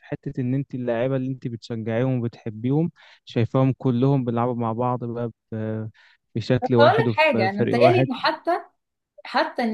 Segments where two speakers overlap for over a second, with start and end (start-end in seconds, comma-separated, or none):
6.6-8.1